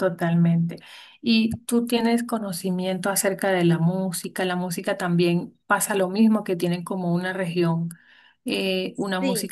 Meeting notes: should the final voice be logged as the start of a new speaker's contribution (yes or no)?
no